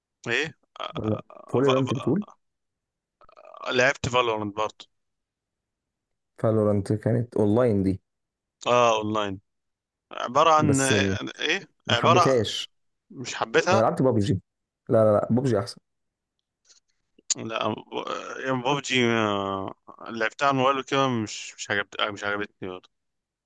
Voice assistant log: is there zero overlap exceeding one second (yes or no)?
no